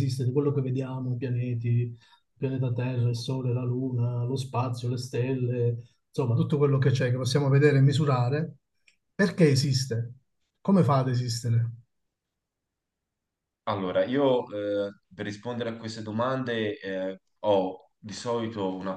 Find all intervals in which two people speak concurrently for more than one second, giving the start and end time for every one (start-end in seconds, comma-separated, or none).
none